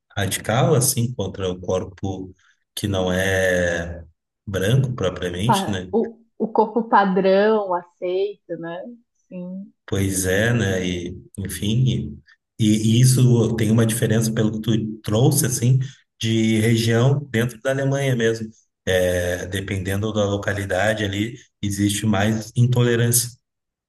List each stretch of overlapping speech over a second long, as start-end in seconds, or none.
none